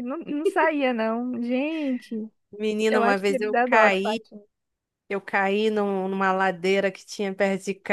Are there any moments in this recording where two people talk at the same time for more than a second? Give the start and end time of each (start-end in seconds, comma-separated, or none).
2.9-4.2